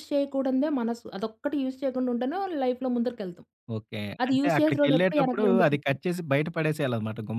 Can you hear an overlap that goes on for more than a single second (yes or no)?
yes